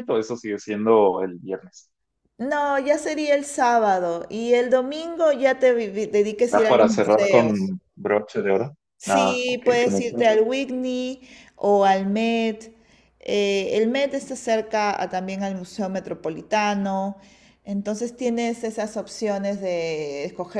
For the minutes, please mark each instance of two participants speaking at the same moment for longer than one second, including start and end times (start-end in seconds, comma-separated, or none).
6.5-7.7, 9.0-10.3